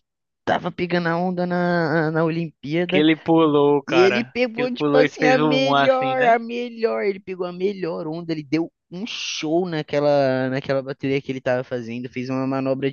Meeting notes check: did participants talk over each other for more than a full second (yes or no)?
yes